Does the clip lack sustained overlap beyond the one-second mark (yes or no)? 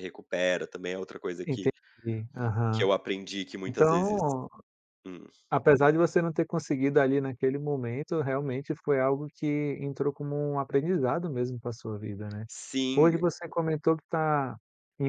yes